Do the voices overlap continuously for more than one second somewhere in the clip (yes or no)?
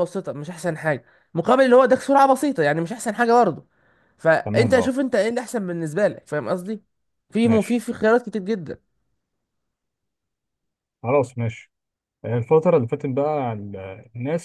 no